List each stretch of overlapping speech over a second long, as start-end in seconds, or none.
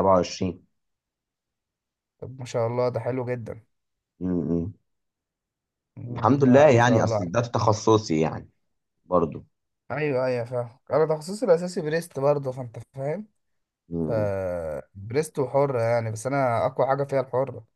6.1-7.5